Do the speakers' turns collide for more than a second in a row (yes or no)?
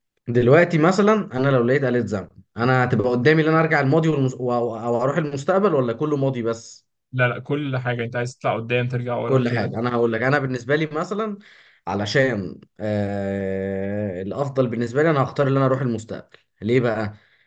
no